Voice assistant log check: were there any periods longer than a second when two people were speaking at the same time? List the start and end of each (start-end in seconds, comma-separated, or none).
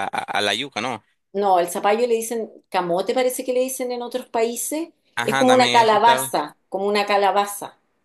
5.1-6.3